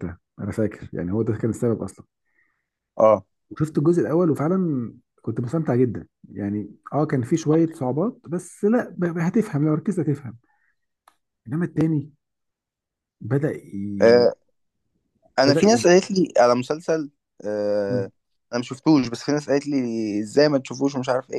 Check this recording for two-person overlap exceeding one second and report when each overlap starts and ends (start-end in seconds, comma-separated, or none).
none